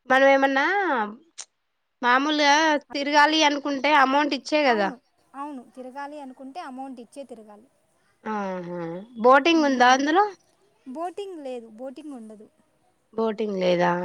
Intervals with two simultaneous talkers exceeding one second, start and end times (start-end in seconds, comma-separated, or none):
none